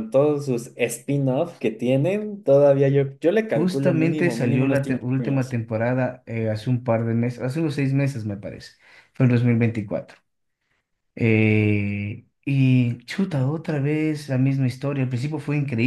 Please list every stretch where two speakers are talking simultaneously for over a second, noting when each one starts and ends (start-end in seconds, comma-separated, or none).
3.5-5.6